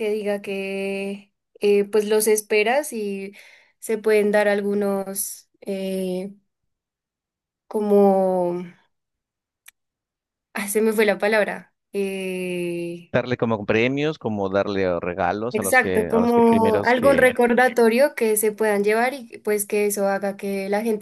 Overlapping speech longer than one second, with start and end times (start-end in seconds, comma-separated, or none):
15.5-17.4